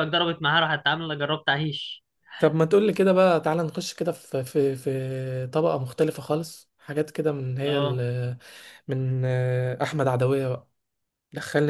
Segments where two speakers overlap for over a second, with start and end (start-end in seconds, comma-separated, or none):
none